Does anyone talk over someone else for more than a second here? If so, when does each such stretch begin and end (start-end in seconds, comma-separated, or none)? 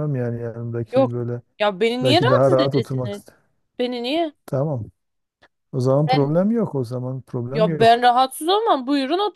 2.0-3.2